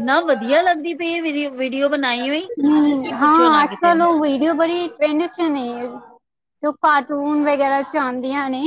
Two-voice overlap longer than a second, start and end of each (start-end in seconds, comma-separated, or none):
none